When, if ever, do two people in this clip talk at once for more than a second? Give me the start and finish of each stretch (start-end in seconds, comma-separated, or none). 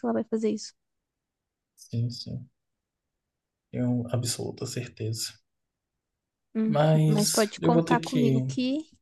6.6-8.4